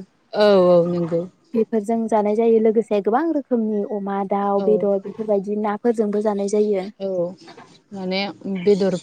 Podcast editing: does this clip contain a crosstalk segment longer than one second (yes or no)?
no